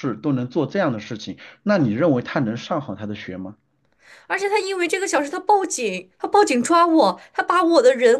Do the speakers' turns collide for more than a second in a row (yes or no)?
no